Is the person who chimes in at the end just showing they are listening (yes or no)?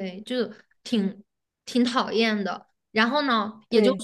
yes